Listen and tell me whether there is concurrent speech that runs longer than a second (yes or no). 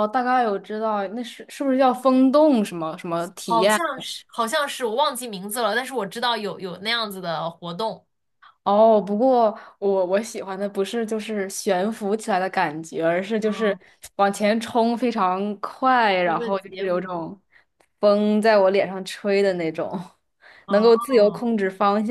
yes